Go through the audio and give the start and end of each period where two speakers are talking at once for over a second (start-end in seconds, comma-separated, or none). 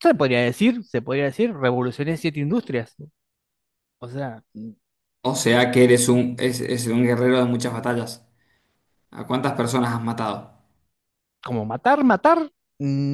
none